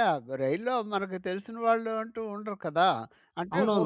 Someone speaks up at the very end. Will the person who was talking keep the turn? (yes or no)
no